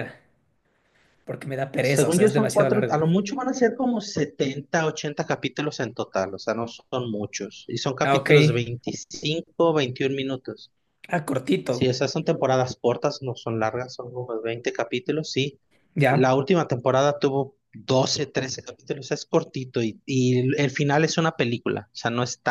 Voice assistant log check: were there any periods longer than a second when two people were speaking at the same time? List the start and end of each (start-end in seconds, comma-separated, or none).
1.8-3.0